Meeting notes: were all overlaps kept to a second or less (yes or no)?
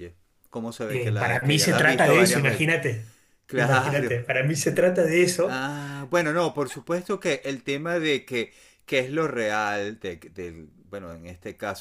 no